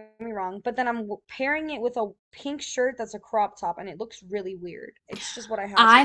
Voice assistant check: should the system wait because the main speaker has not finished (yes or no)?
no